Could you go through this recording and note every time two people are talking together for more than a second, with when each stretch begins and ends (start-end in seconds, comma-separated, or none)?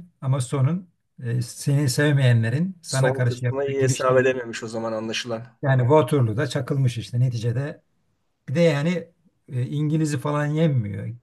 2.9-4.3